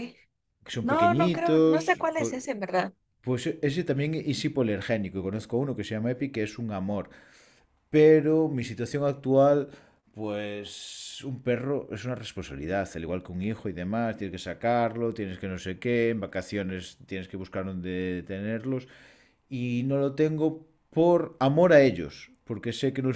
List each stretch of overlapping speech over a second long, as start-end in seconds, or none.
0.8-2.3